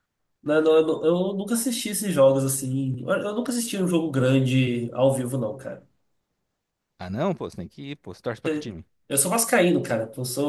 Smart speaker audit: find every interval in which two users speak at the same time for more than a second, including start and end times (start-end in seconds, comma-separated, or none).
none